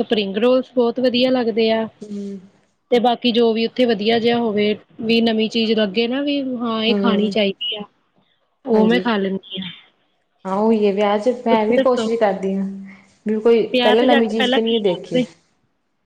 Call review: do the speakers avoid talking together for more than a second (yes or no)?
no